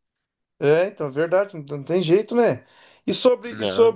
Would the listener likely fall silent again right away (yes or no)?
yes